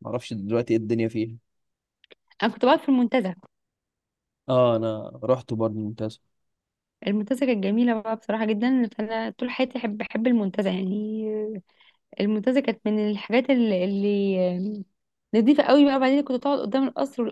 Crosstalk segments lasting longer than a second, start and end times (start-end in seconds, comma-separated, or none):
none